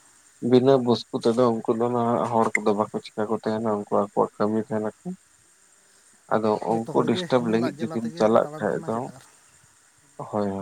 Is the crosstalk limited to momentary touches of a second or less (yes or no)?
no